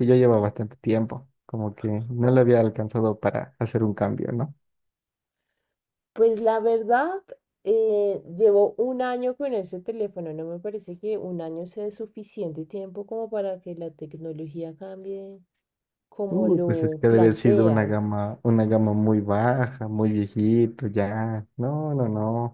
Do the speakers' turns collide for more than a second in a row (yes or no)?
yes